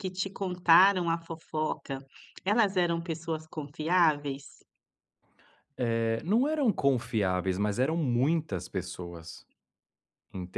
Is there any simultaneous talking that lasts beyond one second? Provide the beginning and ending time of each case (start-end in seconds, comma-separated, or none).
none